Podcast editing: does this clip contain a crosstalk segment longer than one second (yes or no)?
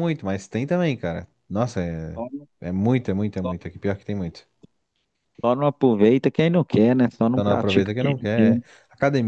yes